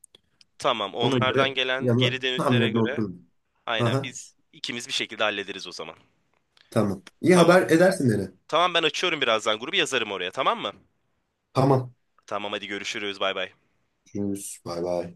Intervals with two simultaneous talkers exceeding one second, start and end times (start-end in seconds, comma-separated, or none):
1.0-3.0